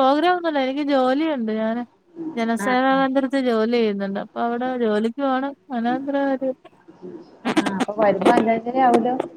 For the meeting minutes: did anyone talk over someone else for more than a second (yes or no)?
no